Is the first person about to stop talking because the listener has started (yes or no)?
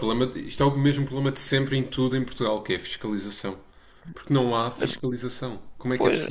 yes